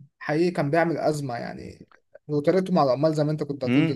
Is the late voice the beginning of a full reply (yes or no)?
yes